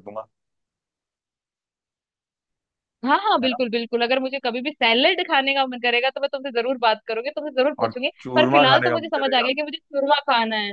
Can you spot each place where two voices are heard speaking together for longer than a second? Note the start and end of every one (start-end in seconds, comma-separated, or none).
7.8-9.5